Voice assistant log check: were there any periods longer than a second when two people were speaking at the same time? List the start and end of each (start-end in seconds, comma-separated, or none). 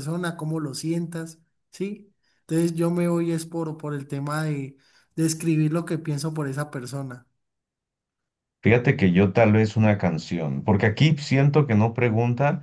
none